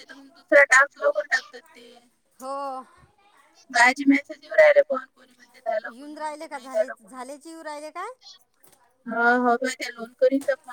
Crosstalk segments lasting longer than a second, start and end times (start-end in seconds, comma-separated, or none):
5.9-7.2